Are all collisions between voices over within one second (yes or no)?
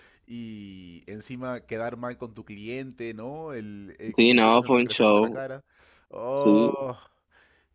no